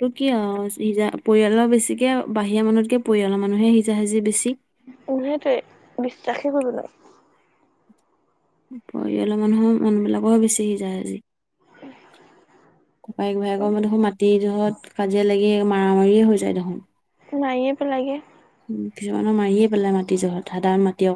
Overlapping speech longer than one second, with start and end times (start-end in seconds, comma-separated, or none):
none